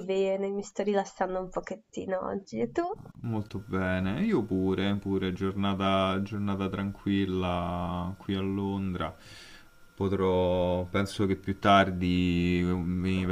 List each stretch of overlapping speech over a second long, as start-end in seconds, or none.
none